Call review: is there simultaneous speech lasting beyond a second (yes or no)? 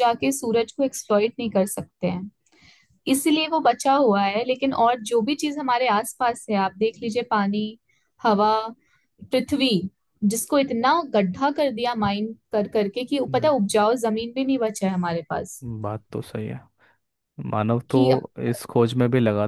no